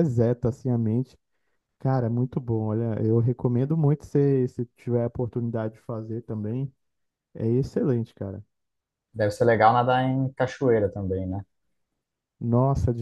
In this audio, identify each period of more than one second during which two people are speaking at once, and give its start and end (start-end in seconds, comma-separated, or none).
none